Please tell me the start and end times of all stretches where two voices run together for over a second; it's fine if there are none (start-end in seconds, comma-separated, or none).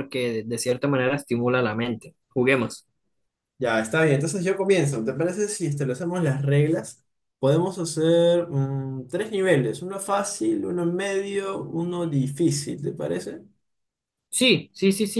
none